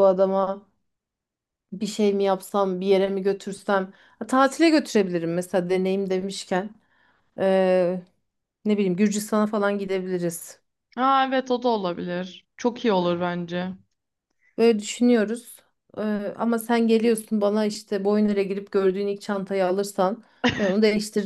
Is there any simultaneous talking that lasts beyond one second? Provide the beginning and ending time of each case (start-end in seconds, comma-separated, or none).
none